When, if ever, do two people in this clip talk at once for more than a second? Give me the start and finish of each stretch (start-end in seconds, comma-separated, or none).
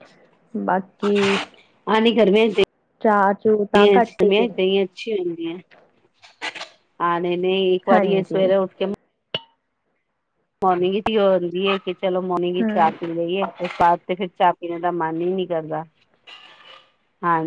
3.0-4.6